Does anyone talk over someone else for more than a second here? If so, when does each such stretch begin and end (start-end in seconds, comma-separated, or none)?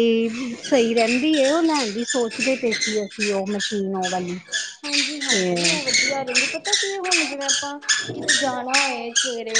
none